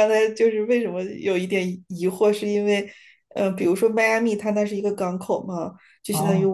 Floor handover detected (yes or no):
no